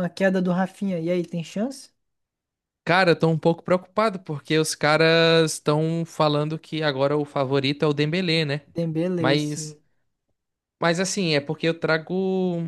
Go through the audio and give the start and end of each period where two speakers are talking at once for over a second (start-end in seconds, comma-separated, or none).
none